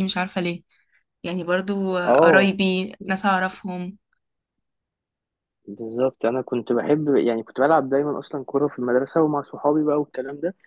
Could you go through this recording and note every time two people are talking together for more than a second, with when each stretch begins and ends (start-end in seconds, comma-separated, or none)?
none